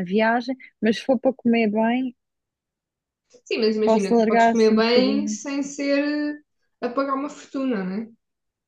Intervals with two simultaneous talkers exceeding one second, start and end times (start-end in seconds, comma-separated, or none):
3.9-5.4